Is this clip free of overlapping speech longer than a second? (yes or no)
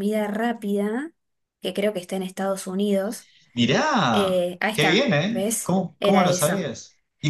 no